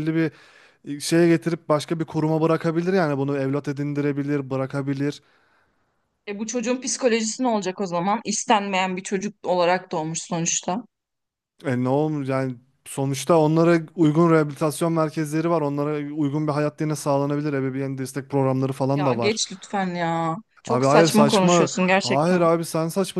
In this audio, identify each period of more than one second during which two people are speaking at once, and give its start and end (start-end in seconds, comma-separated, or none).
20.6-22.4